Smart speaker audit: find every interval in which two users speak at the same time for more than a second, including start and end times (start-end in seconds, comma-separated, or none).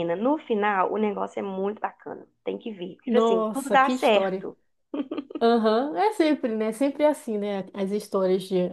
3.0-4.5